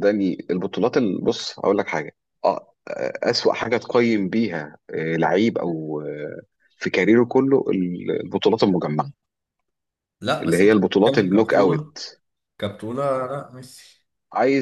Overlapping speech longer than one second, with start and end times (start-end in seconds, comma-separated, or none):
10.4-11.9